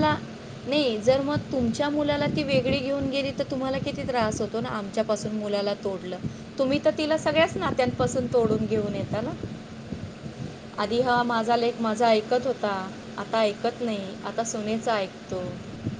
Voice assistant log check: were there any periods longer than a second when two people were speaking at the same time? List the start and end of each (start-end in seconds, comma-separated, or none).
none